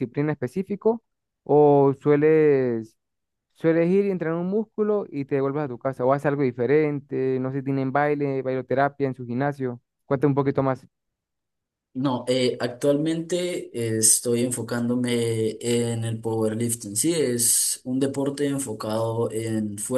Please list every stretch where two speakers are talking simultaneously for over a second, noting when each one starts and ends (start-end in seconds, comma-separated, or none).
none